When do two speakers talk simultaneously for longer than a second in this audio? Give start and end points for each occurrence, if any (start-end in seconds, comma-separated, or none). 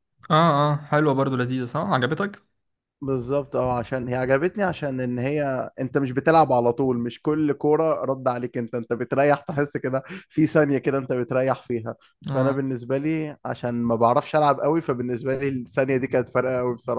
none